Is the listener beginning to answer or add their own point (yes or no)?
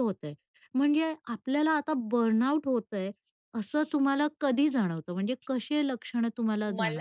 yes